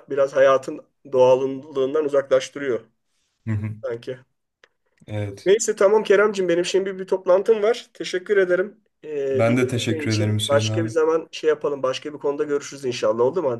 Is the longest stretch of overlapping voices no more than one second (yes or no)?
no